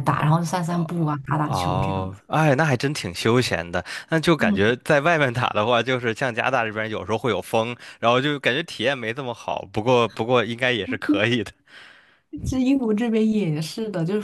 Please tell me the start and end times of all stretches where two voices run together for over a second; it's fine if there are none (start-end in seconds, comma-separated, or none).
0.7-2.0